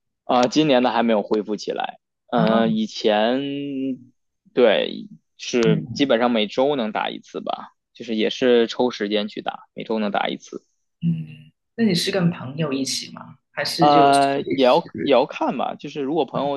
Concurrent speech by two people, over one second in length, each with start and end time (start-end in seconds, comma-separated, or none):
13.8-15.2